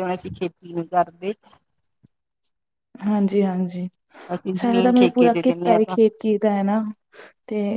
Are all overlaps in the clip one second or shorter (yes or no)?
no